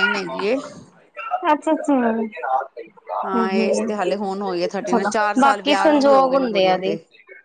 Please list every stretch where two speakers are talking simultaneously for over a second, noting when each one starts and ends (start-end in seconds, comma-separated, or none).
4.9-6.8